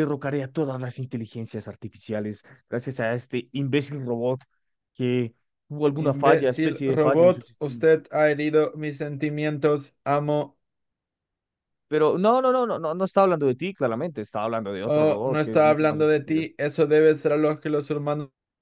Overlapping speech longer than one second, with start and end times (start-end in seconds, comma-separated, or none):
6.0-7.8, 14.8-16.4